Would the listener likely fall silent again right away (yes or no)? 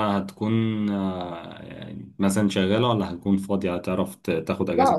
no